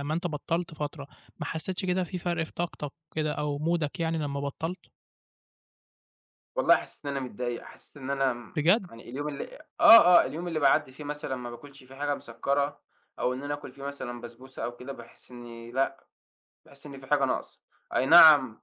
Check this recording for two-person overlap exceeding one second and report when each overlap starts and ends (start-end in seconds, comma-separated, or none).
none